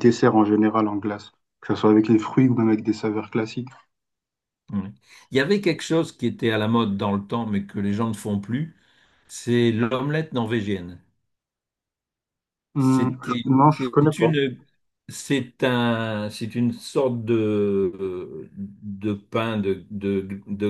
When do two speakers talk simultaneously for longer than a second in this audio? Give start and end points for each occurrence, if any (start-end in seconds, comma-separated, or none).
12.8-14.4